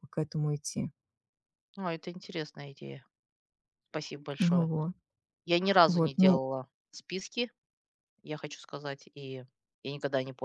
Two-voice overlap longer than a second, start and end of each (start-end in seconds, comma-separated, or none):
none